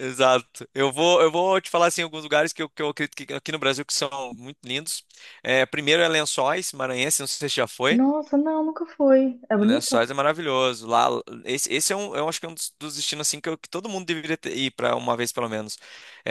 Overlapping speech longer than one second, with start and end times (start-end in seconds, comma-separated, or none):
none